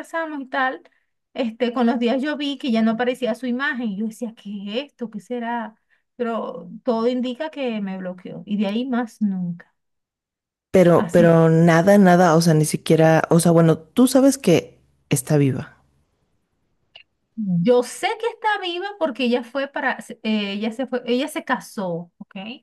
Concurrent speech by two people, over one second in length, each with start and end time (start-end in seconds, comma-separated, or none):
none